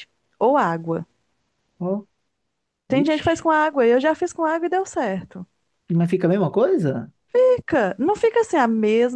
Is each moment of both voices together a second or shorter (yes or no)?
yes